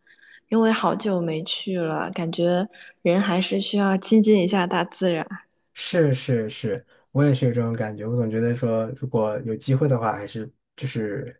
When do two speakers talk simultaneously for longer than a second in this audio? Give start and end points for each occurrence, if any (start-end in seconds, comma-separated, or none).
none